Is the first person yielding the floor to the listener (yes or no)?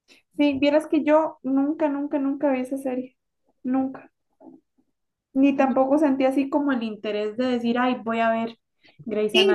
yes